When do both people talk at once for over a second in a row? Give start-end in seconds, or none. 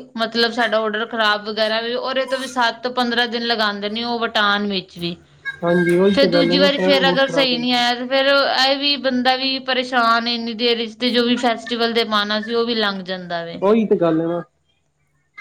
6.1-7.8